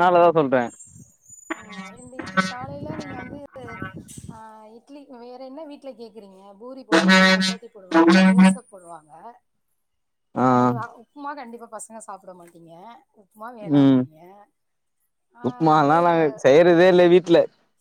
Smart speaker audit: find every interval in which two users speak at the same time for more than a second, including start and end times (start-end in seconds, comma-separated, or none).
none